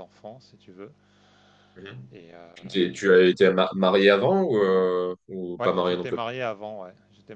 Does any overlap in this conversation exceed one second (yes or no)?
no